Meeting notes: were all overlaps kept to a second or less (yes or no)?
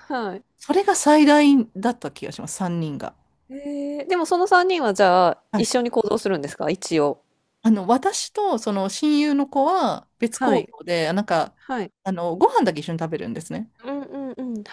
yes